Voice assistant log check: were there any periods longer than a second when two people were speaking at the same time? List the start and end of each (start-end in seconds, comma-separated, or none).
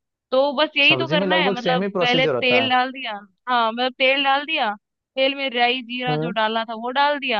0.9-2.7